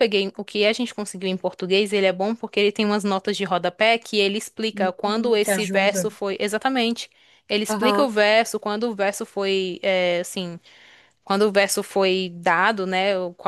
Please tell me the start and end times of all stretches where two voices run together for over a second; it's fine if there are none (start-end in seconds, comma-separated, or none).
4.7-6.1